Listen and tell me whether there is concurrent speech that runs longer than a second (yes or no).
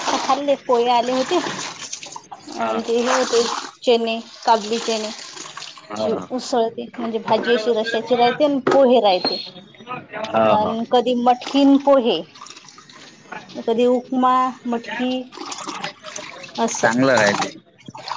no